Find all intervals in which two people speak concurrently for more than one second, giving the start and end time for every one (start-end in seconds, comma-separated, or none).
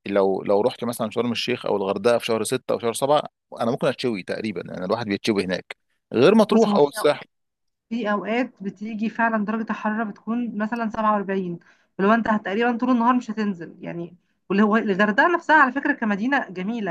none